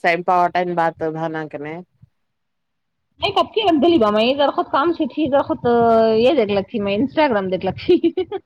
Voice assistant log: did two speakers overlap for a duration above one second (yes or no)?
no